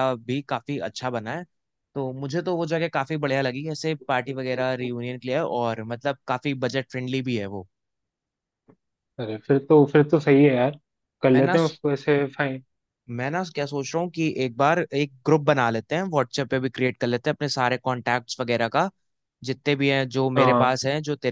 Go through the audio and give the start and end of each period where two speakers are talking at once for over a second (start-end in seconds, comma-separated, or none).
none